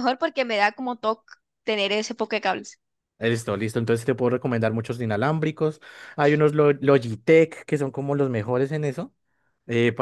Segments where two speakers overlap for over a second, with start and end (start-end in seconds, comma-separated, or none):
none